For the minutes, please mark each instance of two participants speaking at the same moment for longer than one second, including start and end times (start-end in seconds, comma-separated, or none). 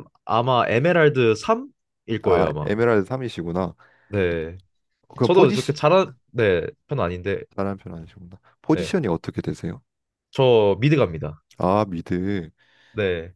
none